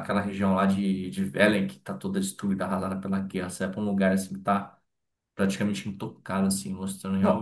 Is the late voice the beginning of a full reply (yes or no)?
no